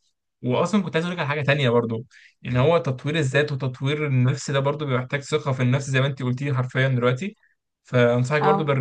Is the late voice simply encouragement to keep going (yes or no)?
yes